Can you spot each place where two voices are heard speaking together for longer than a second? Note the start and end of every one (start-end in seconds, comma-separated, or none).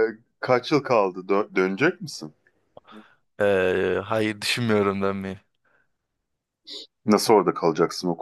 none